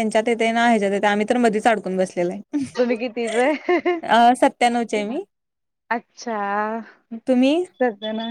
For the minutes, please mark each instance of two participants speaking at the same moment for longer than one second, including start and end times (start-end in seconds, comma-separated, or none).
none